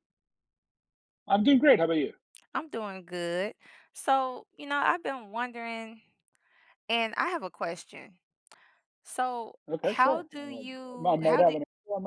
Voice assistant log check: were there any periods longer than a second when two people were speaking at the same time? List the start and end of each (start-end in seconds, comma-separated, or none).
9.7-11.6